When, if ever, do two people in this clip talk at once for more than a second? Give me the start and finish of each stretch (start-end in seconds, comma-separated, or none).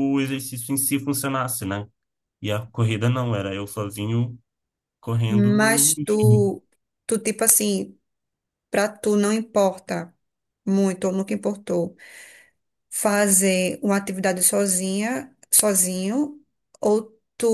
5.3-6.6